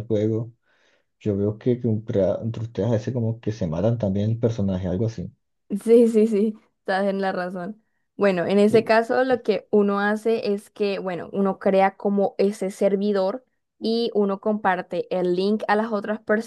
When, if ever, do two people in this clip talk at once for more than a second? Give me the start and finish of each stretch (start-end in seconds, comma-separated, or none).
none